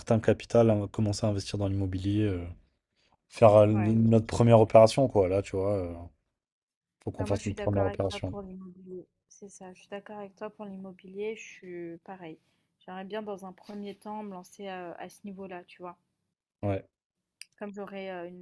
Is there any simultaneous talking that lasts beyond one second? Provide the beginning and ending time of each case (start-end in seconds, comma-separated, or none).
7.2-8.4